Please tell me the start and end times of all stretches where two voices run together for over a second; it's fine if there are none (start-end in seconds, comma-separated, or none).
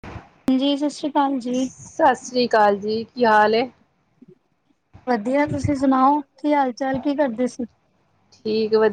none